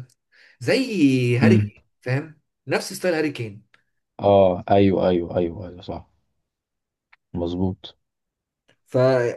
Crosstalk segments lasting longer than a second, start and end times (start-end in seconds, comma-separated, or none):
none